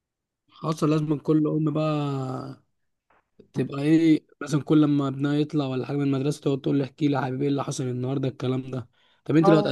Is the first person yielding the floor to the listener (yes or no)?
no